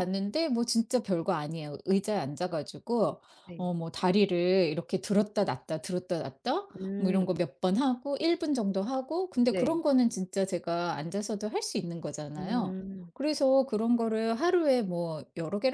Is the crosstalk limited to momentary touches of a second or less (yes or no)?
yes